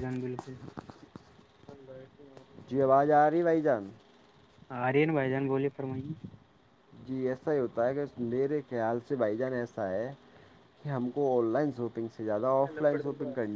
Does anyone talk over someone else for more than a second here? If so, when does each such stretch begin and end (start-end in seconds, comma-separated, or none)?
none